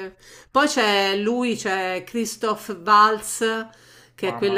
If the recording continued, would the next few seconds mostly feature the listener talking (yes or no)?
no